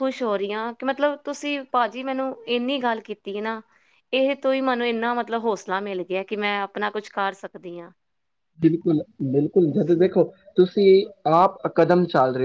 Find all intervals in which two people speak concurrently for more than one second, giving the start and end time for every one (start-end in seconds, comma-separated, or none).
none